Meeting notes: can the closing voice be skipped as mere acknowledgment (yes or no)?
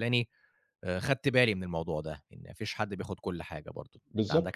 no